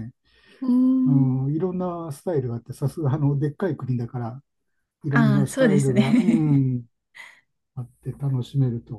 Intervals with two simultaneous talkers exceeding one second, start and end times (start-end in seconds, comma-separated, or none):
5.1-6.6